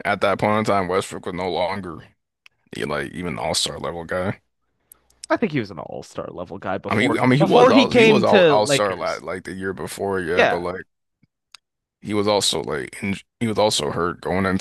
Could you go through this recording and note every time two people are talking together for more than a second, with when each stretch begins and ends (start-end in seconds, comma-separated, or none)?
6.9-9.2